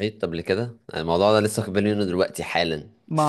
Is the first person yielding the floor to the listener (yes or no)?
no